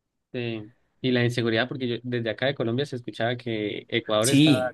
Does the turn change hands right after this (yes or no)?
no